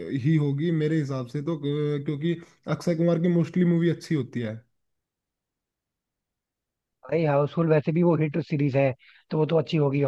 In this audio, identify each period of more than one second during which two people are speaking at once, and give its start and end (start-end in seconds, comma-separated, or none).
none